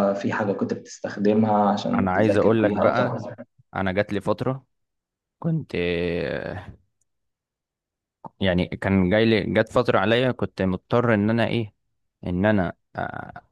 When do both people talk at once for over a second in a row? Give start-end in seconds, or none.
2.0-3.2